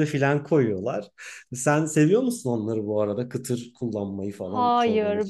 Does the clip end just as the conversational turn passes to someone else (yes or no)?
yes